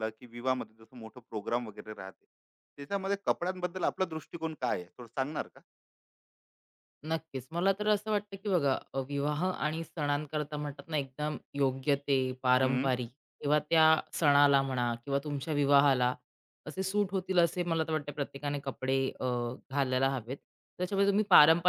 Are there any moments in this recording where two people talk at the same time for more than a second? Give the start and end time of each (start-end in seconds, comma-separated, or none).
none